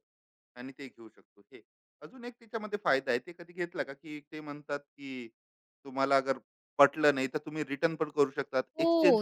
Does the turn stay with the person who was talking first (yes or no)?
no